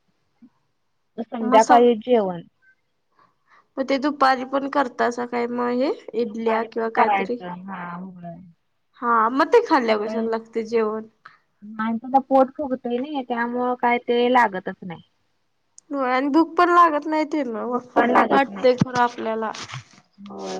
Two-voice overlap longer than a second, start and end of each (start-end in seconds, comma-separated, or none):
6.2-7.4